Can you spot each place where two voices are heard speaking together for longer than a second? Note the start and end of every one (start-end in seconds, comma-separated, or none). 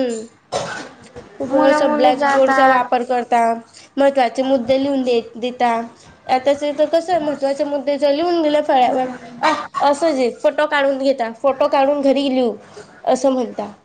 1.5-2.9